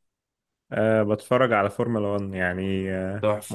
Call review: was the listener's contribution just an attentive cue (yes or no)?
yes